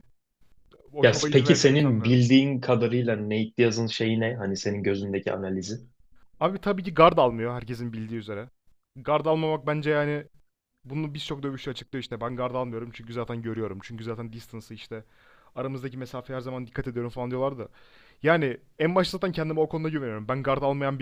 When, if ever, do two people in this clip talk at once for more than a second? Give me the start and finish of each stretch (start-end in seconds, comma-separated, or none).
1.0-2.2